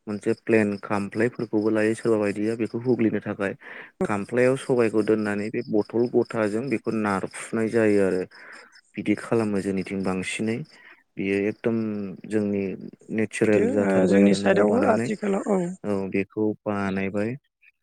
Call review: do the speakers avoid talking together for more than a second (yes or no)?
no